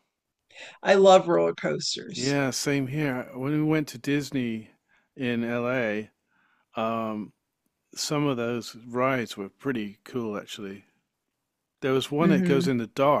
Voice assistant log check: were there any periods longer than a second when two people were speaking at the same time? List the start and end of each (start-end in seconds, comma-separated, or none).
none